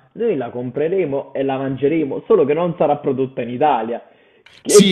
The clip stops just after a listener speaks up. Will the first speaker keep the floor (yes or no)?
no